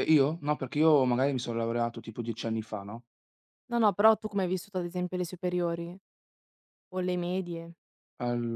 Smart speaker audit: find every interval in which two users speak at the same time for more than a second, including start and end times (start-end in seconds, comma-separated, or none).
none